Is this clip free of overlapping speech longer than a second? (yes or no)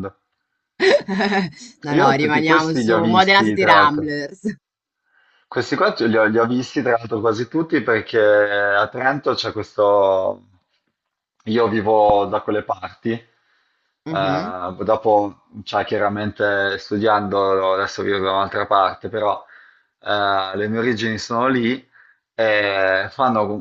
no